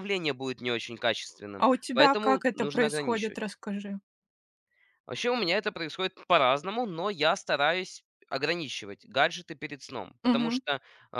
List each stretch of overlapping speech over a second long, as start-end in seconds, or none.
1.6-3.4